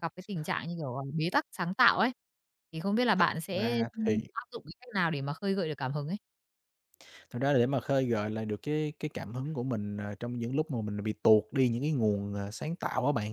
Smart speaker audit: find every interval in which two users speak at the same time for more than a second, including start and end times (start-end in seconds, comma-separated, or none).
none